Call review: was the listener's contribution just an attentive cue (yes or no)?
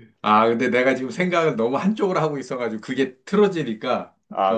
no